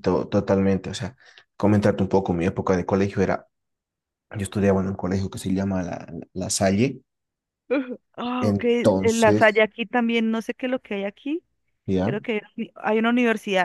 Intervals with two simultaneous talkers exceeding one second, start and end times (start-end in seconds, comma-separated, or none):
8.4-9.6